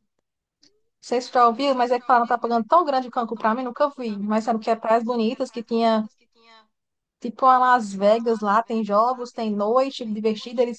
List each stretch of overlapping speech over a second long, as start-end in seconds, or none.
1.3-6.0